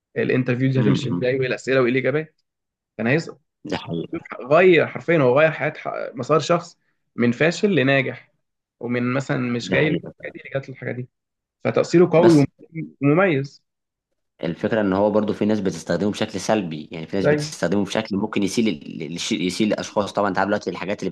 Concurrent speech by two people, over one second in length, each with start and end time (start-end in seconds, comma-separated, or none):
none